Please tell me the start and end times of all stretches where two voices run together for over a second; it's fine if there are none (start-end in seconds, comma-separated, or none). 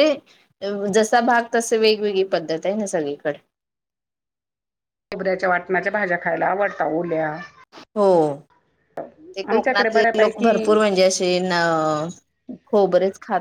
9.5-10.8